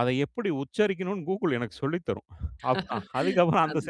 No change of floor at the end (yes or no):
yes